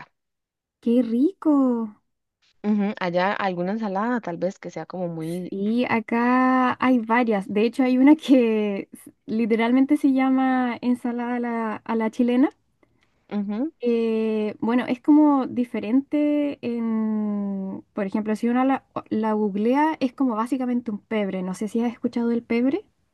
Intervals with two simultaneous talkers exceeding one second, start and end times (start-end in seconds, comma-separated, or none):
none